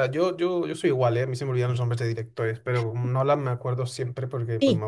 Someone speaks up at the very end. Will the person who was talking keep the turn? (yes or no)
no